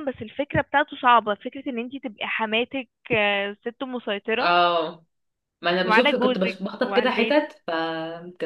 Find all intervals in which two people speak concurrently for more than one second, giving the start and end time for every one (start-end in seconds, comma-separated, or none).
5.8-7.4